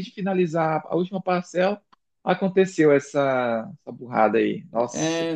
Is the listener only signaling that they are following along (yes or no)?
no